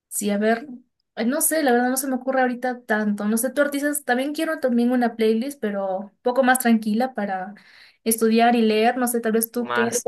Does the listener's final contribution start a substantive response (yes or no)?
yes